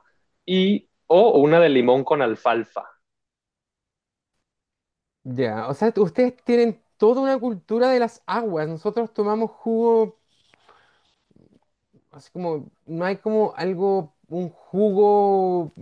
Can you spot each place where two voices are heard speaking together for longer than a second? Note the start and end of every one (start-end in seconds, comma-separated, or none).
none